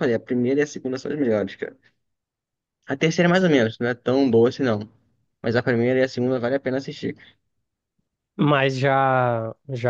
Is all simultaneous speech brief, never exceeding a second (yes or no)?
yes